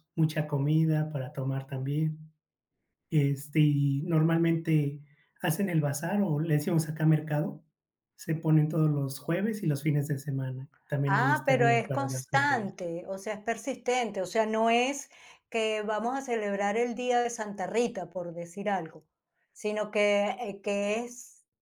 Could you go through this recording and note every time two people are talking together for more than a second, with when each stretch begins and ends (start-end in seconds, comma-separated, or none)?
11.1-12.8